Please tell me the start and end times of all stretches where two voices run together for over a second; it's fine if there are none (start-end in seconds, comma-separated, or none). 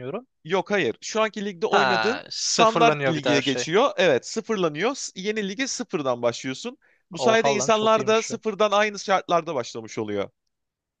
1.7-3.7, 7.2-8.4